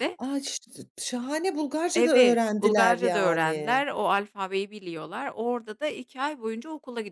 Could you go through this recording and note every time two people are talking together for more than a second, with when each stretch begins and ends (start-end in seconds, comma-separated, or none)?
1.9-3.8